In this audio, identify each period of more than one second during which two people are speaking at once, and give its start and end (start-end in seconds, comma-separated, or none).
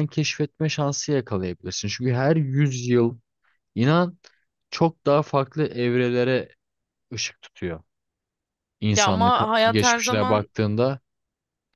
8.9-10.5